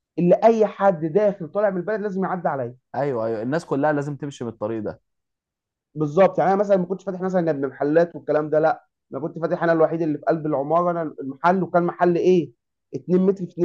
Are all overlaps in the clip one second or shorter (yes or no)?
yes